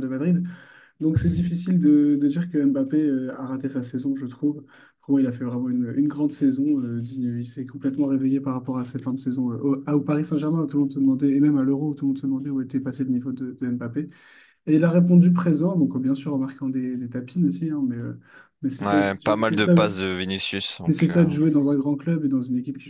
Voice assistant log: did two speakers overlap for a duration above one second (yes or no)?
yes